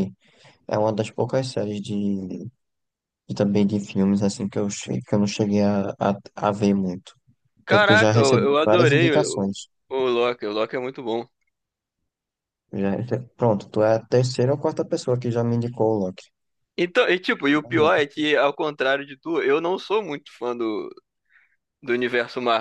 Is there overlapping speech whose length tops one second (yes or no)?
yes